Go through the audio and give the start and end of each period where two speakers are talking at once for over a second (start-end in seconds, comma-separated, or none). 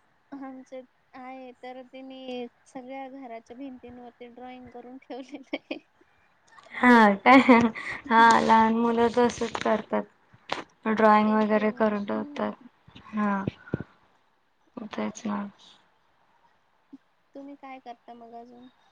11.2-12.5